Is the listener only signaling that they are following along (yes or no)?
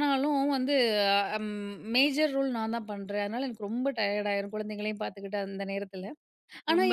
yes